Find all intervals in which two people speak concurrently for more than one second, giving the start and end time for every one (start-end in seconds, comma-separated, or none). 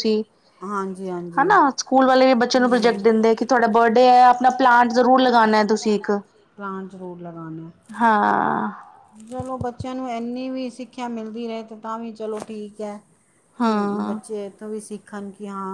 none